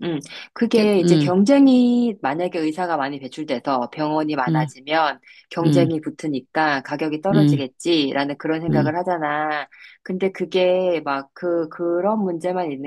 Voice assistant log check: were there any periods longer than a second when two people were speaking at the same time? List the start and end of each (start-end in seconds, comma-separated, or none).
none